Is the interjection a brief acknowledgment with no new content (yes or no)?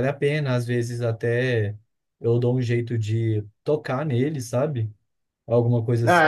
no